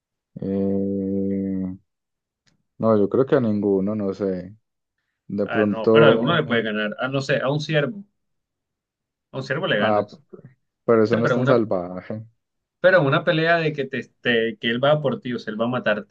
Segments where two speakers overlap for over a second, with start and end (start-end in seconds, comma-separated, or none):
5.5-6.7